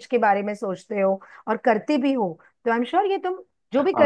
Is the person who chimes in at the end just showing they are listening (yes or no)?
yes